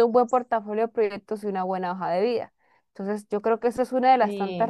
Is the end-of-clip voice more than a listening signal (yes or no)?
no